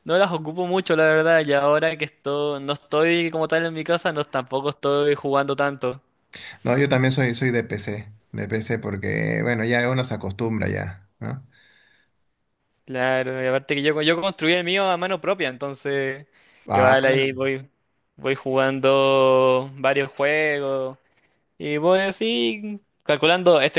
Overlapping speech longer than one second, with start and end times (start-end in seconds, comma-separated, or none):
none